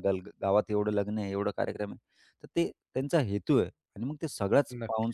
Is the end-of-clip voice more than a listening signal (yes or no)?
no